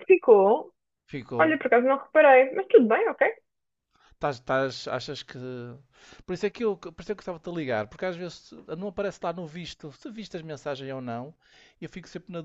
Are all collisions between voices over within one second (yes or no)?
yes